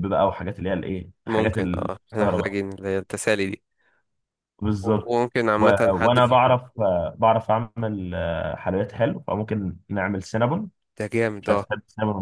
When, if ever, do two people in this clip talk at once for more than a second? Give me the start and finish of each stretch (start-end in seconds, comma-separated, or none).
1.3-2.6, 4.8-6.6